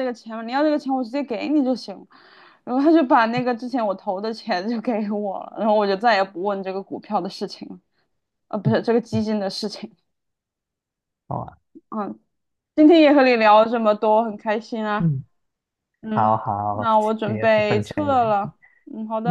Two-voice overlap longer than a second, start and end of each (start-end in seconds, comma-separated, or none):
16.1-18.5